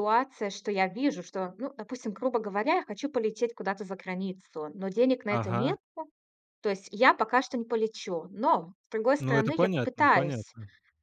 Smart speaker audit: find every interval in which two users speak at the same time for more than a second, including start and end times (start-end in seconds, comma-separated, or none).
9.2-10.5